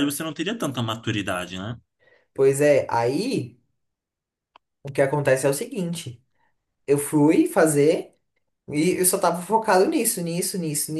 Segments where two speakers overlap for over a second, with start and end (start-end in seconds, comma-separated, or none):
none